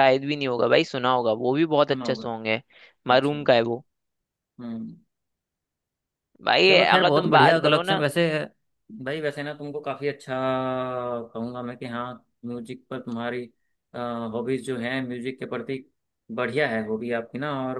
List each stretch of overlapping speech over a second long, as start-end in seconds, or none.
6.7-8.0